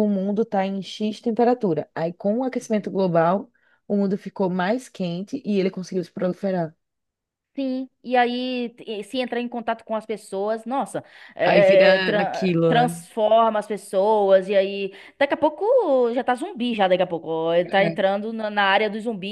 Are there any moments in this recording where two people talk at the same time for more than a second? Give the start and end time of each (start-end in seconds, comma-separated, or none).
11.4-12.9